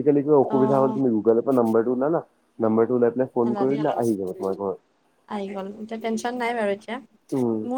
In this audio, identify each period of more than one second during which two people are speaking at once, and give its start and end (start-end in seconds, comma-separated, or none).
none